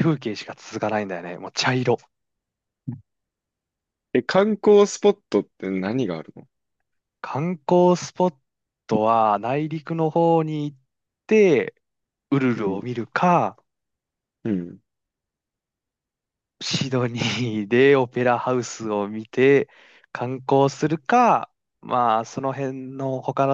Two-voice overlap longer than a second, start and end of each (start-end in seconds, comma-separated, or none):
none